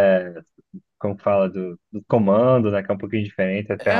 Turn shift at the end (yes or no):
yes